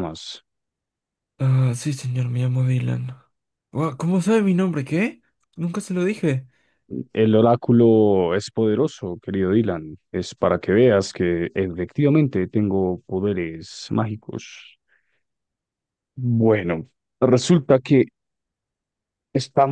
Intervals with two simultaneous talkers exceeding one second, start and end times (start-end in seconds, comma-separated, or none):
none